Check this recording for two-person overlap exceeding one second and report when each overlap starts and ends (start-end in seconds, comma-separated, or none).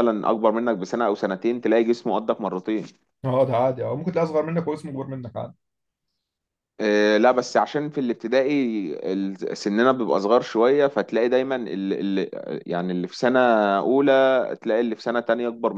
none